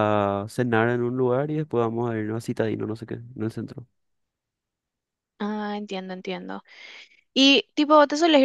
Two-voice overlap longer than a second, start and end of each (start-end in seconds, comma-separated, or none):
none